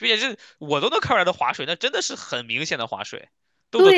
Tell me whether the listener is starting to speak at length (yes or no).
no